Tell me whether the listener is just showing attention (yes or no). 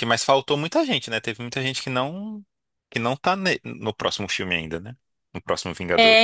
no